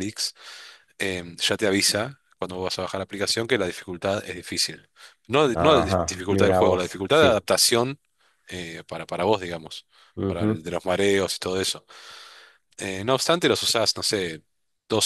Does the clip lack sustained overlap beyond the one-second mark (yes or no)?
no